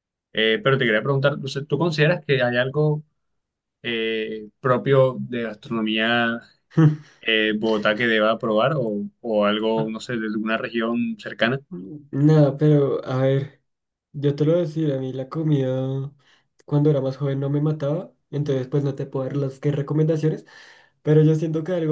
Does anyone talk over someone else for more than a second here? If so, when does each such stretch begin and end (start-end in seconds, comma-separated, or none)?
none